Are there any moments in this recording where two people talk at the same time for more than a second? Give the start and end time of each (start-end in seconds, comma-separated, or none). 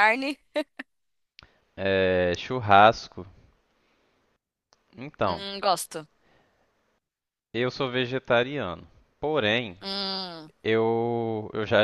none